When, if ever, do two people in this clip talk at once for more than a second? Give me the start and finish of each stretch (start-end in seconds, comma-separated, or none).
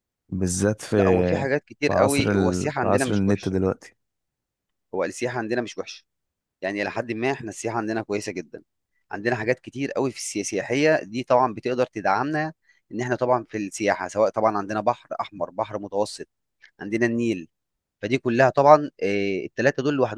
1.9-3.5